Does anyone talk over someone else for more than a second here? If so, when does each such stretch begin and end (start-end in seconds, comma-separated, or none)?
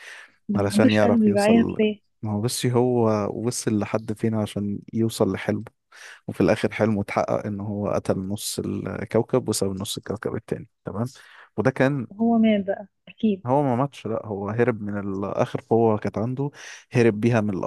0.5-1.8